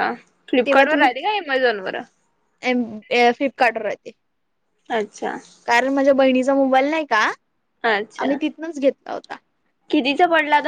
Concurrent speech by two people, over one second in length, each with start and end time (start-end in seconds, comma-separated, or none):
none